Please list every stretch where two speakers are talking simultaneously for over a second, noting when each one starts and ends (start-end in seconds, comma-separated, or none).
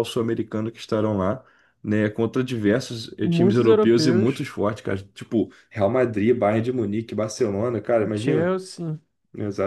3.2-4.5